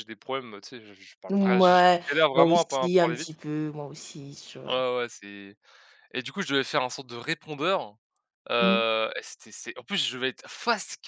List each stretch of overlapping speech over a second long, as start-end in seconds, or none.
1.3-3.3